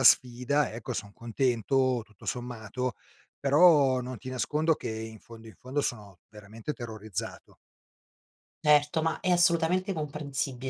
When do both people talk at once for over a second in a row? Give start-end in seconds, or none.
none